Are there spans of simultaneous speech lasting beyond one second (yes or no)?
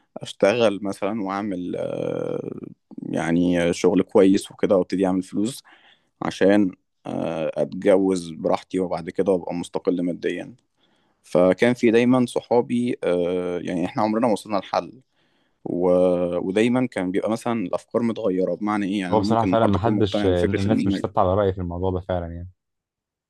yes